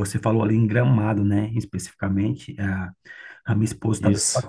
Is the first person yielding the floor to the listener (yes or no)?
no